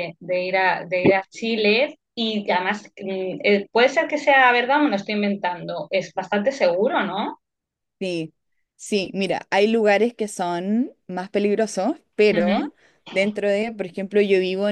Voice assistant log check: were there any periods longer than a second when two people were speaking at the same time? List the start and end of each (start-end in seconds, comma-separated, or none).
none